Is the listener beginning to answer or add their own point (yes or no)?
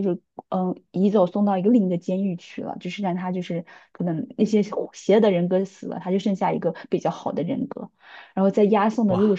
no